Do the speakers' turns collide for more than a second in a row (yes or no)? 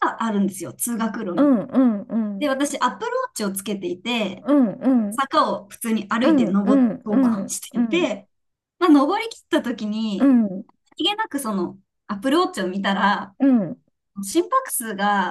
yes